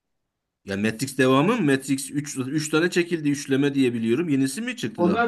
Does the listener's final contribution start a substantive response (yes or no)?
yes